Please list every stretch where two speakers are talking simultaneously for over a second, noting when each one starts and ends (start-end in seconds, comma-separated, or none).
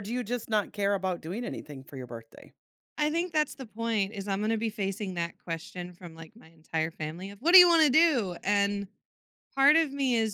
none